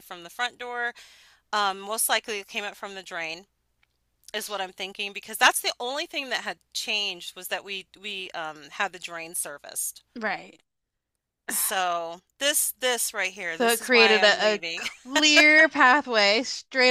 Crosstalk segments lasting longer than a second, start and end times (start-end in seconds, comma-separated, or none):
13.5-14.9